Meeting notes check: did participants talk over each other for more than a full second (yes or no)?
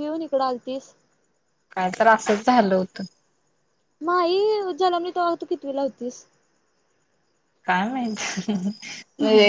no